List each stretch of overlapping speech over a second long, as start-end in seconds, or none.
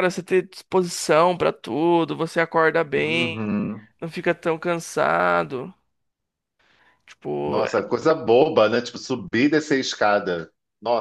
none